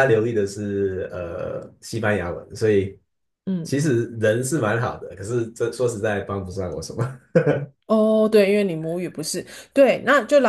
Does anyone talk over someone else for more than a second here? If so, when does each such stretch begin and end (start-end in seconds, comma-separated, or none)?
none